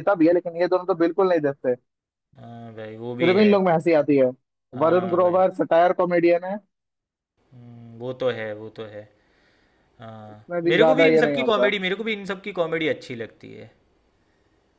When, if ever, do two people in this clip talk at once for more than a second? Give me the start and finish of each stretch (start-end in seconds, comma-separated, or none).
10.3-11.7